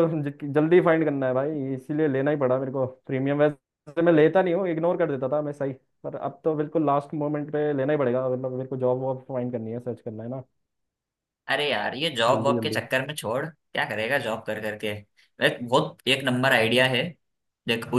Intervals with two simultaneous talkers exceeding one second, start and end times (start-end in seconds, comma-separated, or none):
none